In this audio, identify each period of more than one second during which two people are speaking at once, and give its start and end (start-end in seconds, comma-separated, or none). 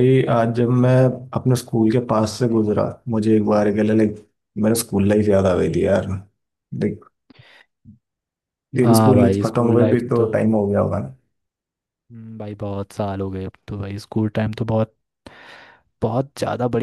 8.8-10.3